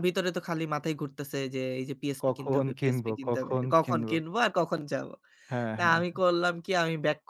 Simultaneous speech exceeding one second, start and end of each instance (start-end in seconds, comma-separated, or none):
2.2-4.2